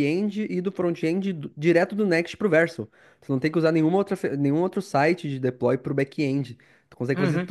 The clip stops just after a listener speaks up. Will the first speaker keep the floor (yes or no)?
no